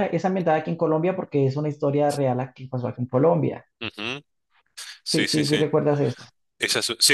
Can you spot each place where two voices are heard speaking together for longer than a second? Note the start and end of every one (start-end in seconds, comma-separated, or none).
none